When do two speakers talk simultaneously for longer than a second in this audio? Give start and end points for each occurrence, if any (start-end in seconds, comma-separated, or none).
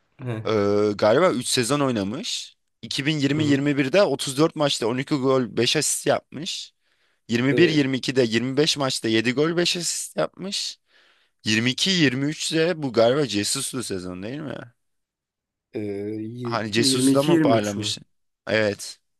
16.4-17.9